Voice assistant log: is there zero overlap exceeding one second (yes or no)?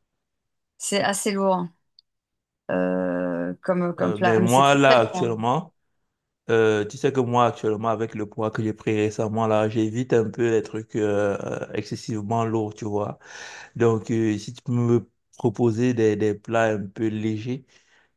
no